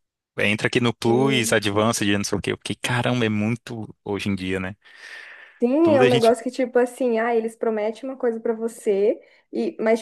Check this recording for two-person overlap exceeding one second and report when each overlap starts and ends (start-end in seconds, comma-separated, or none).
none